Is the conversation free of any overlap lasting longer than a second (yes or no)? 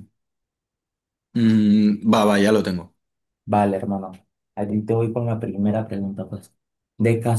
yes